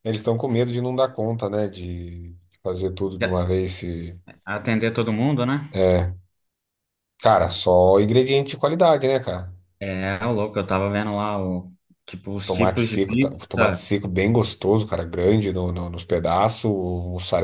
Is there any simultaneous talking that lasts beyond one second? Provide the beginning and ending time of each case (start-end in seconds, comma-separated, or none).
12.4-13.9